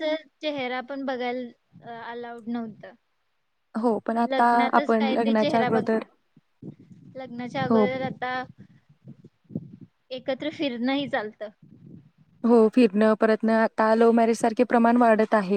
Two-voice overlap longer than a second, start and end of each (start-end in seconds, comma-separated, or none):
4.3-6.0